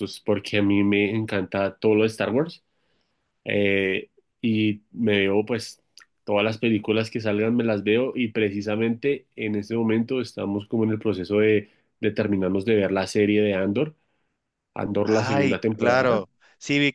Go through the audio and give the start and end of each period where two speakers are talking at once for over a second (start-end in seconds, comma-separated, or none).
15.0-16.2